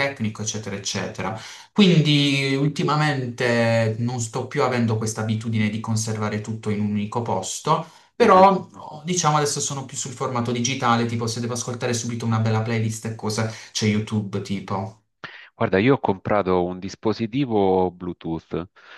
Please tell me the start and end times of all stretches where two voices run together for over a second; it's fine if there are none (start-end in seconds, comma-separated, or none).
none